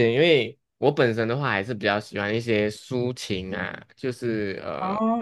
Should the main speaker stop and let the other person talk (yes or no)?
yes